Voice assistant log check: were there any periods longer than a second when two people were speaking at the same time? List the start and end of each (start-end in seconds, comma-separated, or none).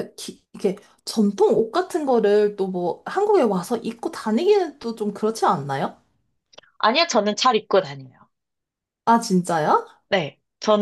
none